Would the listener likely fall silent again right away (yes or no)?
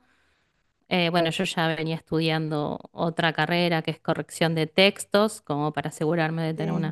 yes